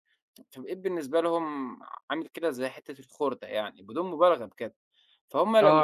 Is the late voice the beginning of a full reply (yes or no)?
yes